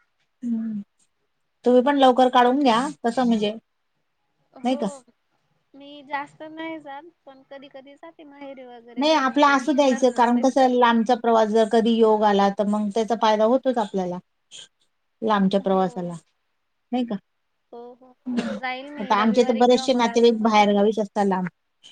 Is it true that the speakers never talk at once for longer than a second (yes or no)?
no